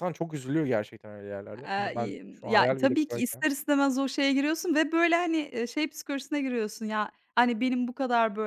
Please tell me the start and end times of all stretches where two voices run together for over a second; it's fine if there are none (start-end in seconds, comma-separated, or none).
1.6-3.5